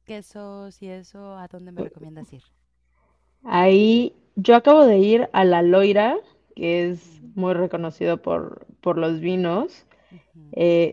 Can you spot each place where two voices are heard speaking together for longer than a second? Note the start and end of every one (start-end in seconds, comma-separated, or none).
none